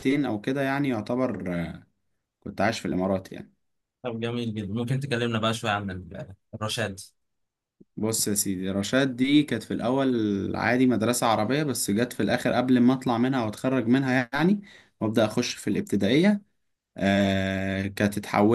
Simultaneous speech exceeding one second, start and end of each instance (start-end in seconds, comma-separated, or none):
none